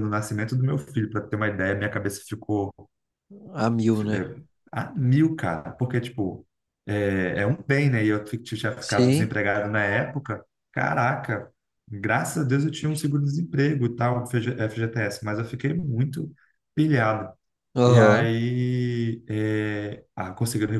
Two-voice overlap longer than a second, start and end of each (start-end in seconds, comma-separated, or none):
none